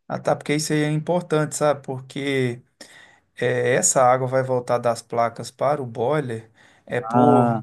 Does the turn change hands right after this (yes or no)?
no